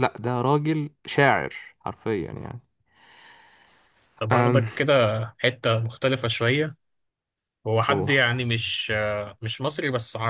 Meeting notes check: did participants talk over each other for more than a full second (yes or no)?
no